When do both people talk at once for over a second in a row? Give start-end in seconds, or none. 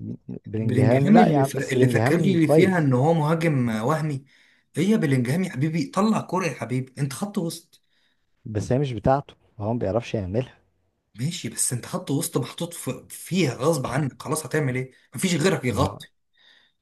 0.6-2.9